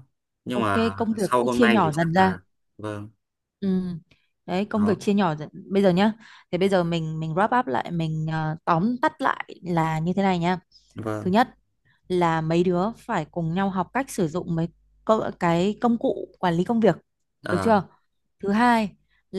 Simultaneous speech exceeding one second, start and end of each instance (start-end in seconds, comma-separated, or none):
0.5-2.3